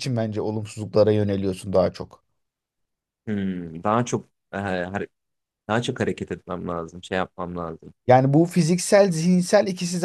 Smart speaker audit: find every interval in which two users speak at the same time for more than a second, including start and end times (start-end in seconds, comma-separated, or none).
none